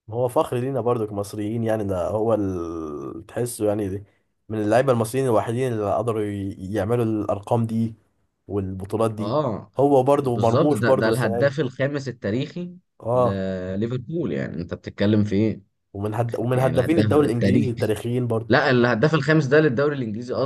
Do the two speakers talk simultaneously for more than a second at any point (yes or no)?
yes